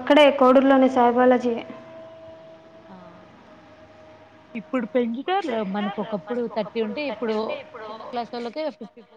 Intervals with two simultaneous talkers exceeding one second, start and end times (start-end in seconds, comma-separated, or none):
none